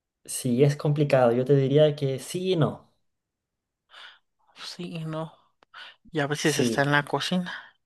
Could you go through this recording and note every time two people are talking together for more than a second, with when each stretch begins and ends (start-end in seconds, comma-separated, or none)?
none